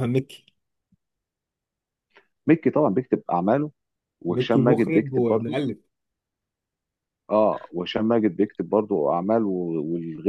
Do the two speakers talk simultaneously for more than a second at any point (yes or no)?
yes